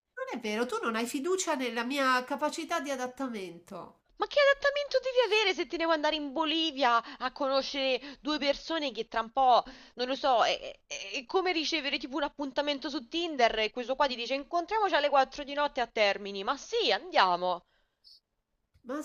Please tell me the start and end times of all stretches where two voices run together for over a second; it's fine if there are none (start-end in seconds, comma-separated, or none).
none